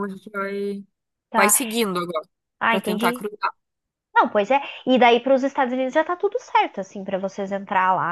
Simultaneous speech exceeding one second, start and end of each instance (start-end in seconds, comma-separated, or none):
none